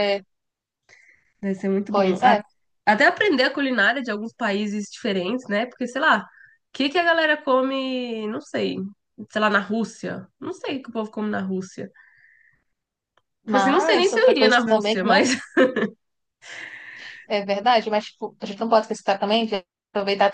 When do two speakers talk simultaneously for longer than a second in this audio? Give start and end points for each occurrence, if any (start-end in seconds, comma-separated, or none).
13.4-15.2